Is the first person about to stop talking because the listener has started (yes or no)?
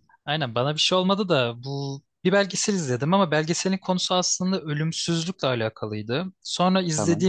no